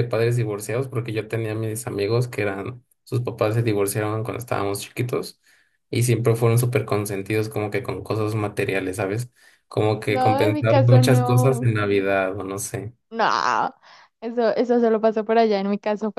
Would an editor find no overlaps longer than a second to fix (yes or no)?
no